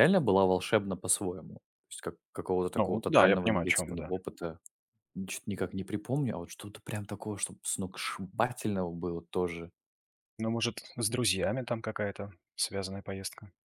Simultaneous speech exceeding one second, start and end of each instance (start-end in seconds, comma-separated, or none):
2.8-4.1